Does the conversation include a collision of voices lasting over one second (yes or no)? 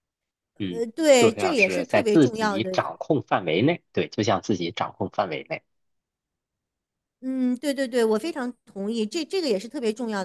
yes